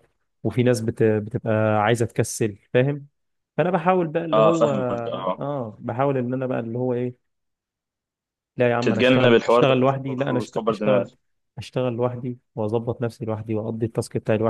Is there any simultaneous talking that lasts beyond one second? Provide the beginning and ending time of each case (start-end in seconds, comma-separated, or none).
8.8-11.1